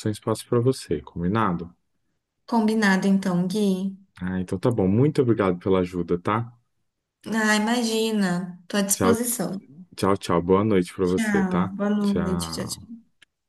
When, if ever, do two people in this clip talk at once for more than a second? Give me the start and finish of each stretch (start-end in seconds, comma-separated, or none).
11.0-12.9